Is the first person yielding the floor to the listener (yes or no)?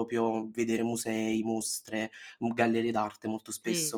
yes